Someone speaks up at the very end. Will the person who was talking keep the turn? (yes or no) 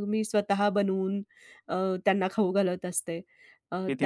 yes